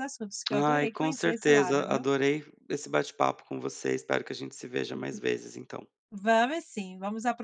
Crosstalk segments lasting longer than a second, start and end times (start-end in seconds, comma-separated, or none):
0.5-2.0